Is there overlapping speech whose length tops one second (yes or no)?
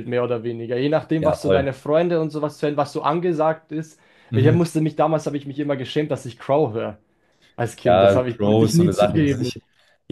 yes